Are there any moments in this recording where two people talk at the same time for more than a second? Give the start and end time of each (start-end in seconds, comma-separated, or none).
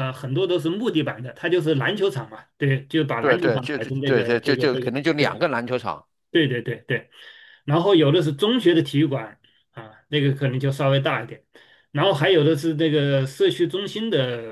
3.2-5.4